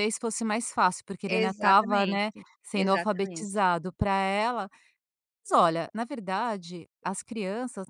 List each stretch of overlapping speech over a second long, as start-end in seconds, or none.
1.3-3.6